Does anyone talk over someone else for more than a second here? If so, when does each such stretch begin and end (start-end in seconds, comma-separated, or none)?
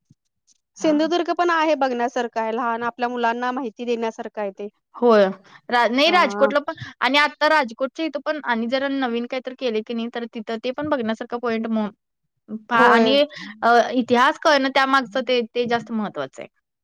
none